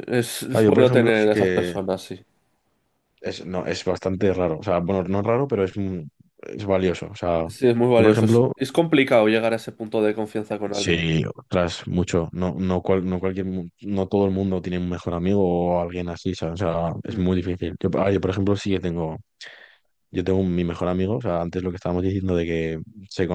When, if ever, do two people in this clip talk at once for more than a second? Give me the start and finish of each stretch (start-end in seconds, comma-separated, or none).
0.5-1.8